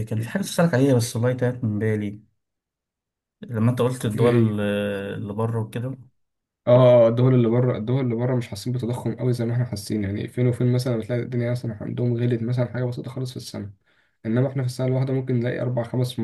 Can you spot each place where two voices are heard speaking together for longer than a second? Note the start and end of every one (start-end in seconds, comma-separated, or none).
none